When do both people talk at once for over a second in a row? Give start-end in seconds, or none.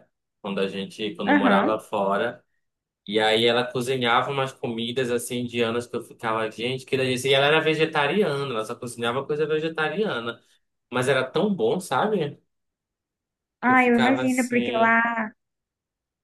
13.6-15.0